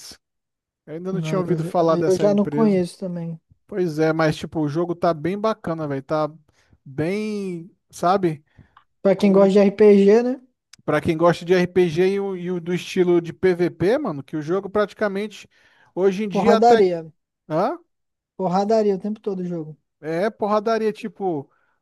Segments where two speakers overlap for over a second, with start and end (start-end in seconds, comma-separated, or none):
1.2-2.8